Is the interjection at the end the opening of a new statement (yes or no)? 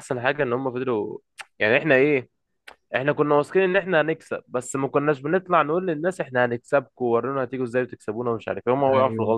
yes